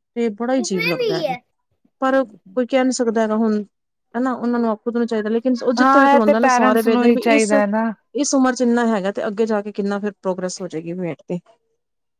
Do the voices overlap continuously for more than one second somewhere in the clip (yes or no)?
yes